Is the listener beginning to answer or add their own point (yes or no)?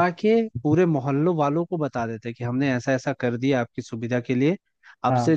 no